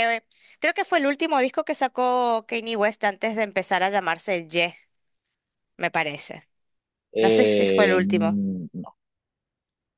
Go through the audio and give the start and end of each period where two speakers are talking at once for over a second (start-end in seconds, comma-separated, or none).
7.2-8.4